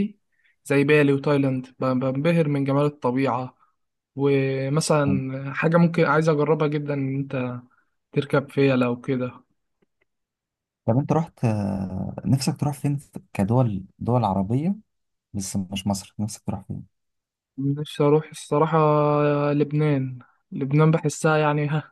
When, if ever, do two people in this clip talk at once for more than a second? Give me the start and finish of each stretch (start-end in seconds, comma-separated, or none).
none